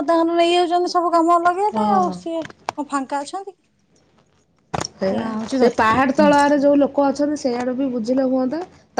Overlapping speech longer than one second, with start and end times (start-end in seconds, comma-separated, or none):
none